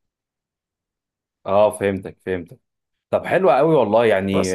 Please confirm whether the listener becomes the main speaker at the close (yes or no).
no